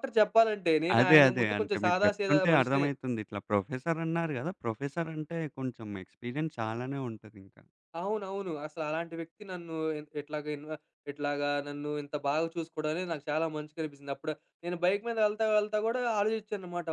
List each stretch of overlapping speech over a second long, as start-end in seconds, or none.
1.0-2.9